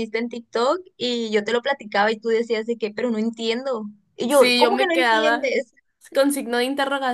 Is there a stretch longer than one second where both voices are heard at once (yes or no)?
yes